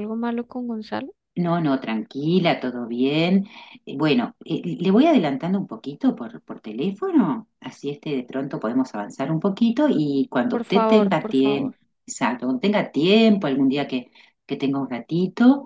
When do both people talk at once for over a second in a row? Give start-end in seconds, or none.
10.5-11.7